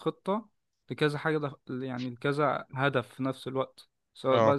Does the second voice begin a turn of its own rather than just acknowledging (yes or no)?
no